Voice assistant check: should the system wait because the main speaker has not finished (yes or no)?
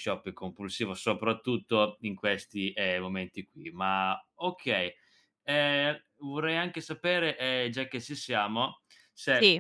yes